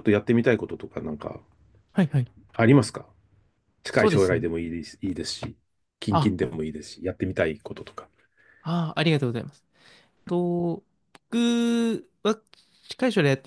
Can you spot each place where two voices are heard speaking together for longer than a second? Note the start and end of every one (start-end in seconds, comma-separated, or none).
none